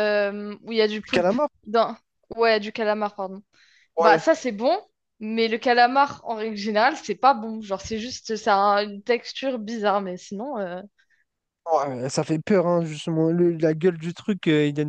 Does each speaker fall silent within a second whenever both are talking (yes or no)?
yes